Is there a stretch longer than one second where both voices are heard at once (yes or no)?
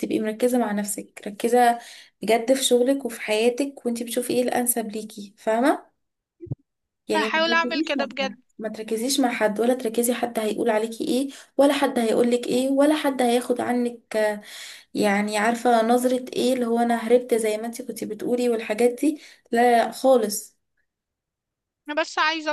yes